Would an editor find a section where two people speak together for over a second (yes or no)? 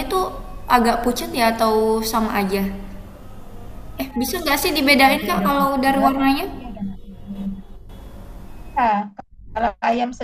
yes